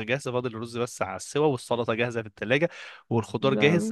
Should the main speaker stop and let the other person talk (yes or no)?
no